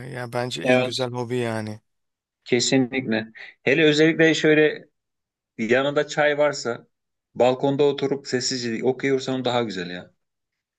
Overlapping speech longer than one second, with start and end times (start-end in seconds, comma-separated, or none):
none